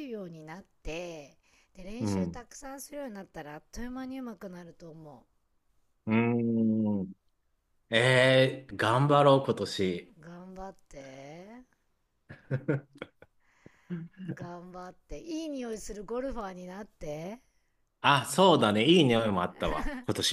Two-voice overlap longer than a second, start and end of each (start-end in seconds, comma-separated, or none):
none